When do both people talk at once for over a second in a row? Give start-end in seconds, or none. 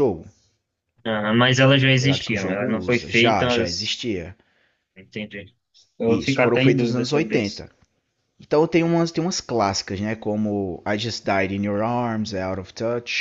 2.0-3.9, 6.1-7.6